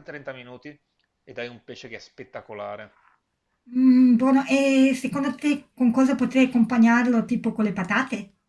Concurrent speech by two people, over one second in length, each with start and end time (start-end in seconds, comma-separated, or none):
none